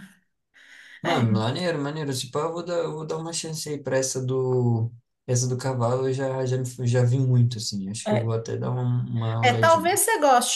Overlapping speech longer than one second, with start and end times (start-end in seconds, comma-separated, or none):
none